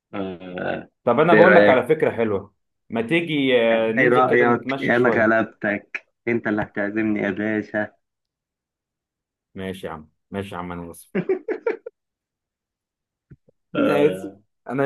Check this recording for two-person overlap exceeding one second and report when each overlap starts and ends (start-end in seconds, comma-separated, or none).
4.0-5.3